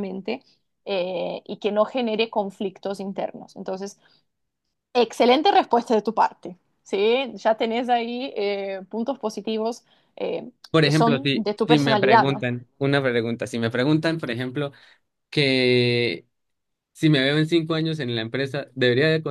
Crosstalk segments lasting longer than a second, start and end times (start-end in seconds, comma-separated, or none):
10.7-12.4